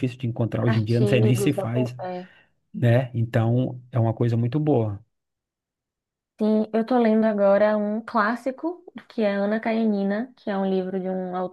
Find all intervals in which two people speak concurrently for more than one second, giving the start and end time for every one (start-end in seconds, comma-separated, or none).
0.7-2.0